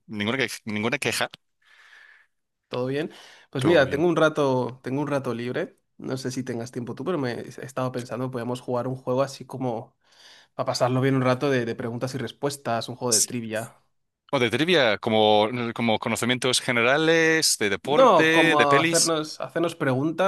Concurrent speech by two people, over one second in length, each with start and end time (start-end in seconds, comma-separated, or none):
17.8-19.1